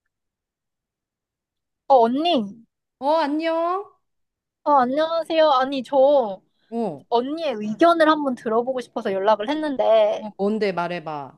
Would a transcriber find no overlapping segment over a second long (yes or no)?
yes